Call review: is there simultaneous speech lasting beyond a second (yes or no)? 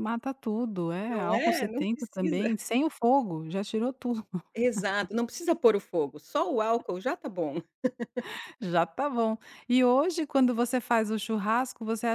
yes